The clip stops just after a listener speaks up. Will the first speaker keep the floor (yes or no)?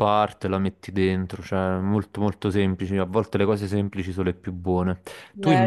no